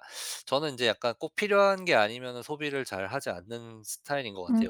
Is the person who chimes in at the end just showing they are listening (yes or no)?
no